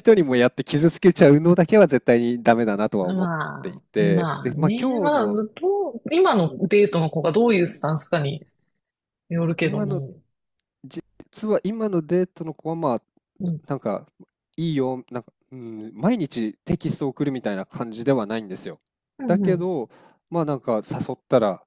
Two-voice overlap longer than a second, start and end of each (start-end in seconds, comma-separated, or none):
3.0-5.4